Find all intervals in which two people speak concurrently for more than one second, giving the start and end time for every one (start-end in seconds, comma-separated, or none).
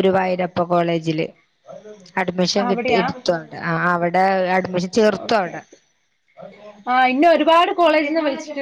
none